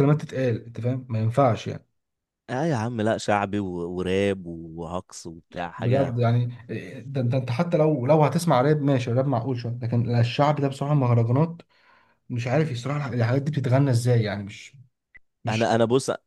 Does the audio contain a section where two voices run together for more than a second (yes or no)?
no